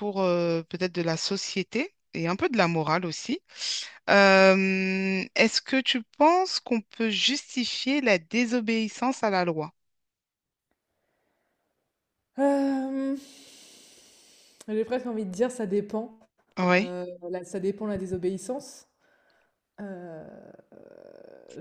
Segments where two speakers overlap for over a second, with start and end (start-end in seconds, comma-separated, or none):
none